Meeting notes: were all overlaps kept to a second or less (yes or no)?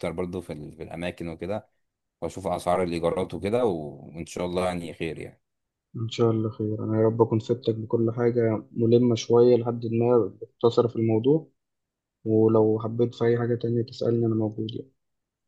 yes